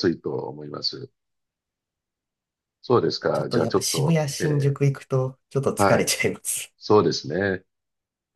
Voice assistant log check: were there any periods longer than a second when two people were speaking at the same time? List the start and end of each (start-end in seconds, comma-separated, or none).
3.3-4.8